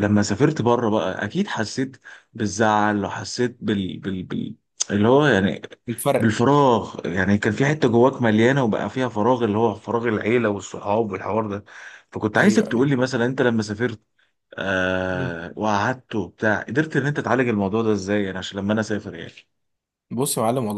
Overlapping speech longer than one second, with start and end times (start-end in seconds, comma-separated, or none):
none